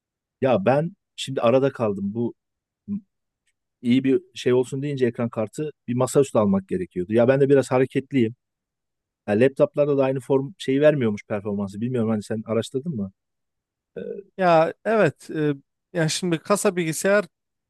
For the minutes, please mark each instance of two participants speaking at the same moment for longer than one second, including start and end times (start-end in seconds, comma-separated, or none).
none